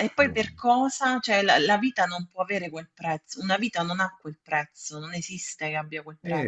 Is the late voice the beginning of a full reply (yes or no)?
yes